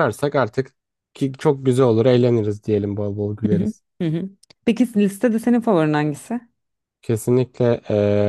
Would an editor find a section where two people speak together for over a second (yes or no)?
no